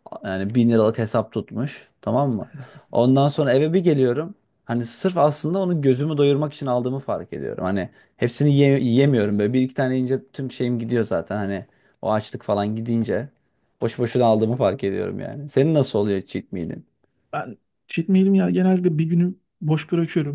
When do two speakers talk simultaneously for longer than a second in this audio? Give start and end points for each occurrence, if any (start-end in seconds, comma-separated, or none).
none